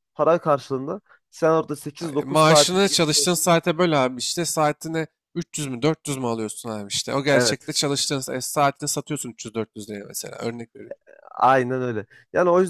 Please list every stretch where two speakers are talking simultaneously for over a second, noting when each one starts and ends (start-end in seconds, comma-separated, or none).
2.0-3.5